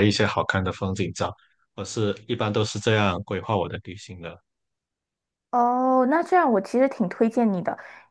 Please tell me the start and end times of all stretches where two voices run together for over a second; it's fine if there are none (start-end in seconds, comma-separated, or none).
none